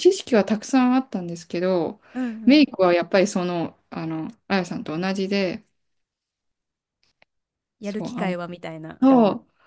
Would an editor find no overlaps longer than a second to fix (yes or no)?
yes